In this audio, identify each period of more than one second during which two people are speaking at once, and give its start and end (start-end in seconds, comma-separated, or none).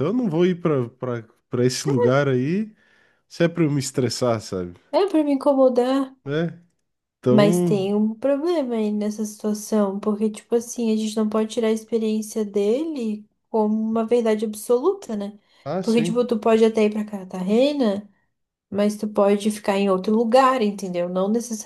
none